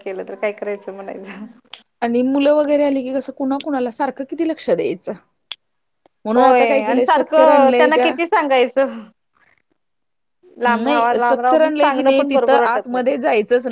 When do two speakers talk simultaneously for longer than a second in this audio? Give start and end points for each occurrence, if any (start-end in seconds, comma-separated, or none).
6.3-8.1, 10.7-13.1